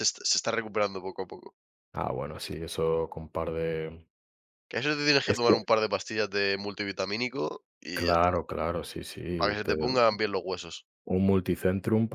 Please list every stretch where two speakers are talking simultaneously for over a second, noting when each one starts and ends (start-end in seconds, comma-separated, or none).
none